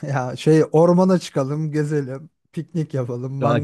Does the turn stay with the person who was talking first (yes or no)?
no